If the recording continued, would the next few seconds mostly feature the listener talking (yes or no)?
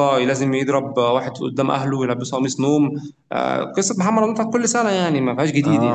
yes